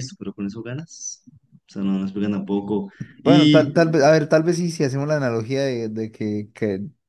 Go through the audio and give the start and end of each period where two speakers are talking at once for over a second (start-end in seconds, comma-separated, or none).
none